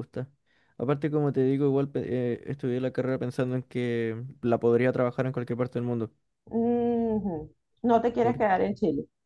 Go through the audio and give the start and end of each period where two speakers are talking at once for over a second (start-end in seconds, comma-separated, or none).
none